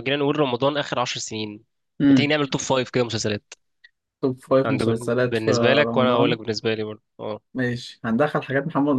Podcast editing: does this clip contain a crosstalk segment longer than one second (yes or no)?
yes